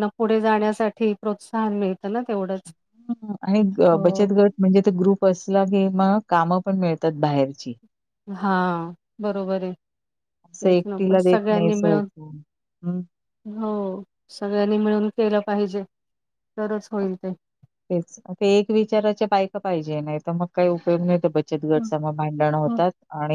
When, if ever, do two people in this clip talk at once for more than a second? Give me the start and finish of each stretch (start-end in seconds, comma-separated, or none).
10.5-12.1